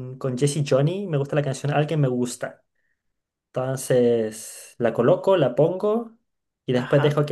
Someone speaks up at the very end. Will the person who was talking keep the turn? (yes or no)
yes